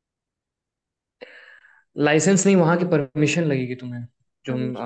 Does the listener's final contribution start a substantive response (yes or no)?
no